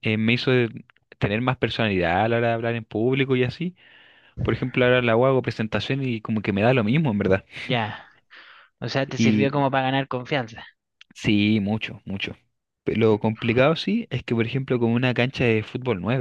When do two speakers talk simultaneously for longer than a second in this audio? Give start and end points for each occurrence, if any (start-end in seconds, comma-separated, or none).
none